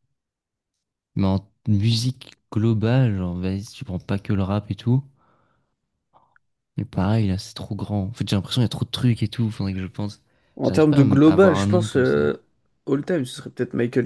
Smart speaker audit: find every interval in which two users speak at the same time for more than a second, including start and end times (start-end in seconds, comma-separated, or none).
10.6-12.3